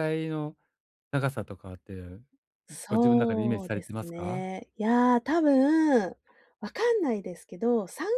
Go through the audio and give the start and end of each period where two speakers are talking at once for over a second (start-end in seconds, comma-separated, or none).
2.9-4.5